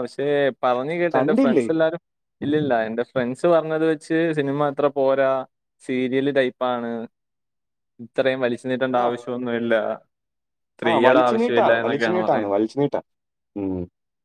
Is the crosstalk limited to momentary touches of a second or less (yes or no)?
no